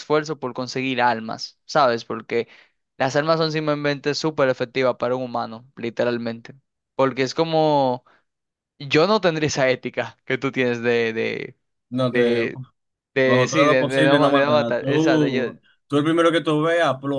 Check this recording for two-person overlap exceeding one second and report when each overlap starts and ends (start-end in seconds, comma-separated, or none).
13.2-15.4